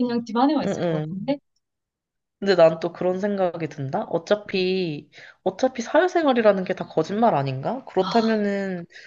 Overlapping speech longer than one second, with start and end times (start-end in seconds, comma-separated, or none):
none